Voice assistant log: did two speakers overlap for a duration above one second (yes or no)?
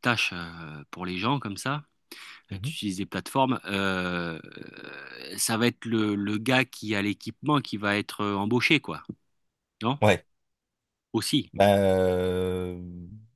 no